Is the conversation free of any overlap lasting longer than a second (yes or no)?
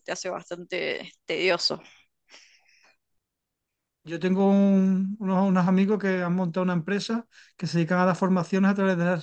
yes